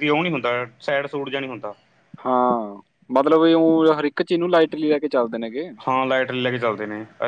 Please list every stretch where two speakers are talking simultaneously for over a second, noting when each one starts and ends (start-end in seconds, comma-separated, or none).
none